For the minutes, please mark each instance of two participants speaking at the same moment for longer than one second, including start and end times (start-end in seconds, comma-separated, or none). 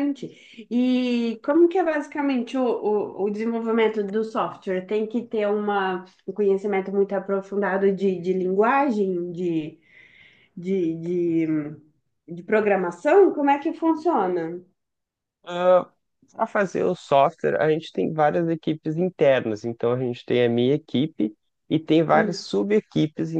none